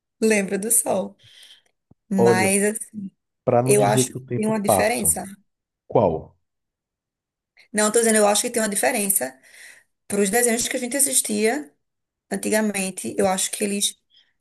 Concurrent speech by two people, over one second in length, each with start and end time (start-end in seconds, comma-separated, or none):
3.6-5.1